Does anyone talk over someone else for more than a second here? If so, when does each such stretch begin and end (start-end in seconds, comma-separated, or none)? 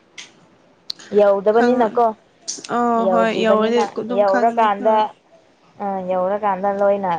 3.1-5.0